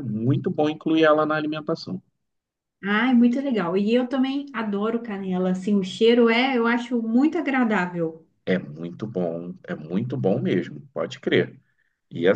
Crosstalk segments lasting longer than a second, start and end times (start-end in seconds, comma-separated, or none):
none